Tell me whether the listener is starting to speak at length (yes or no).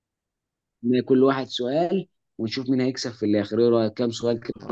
yes